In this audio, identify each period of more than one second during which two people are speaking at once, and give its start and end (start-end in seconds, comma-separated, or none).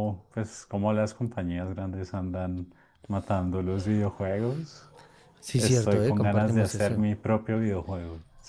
5.6-7.0